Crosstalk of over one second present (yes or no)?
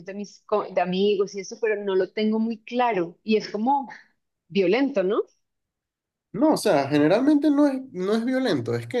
no